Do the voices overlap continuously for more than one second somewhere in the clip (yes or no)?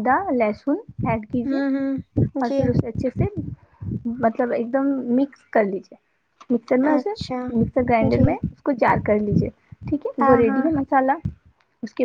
yes